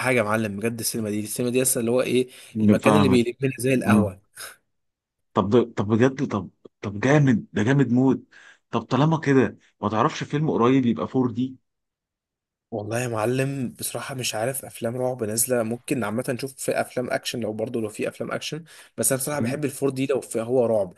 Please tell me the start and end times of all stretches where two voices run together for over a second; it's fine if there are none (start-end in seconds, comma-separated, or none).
none